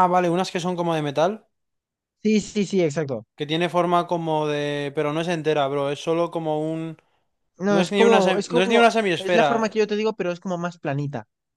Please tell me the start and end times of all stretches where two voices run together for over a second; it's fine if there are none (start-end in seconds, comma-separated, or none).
7.7-9.6